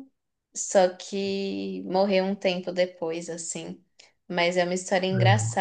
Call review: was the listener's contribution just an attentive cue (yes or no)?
yes